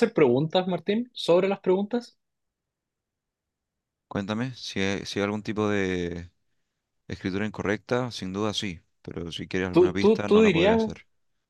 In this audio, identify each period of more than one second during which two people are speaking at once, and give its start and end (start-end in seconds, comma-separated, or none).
9.7-10.9